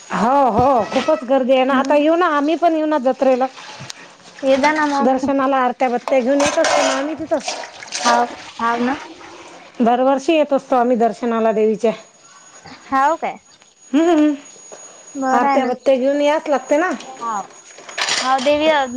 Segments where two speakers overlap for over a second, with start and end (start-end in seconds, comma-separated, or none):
none